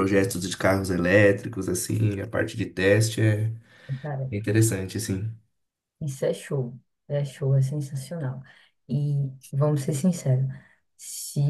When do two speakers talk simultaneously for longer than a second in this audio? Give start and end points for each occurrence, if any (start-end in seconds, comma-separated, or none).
none